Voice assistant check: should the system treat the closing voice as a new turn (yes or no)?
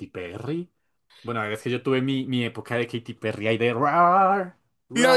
yes